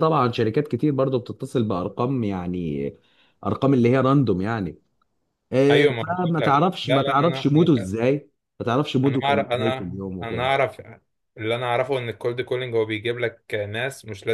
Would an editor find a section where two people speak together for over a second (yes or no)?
yes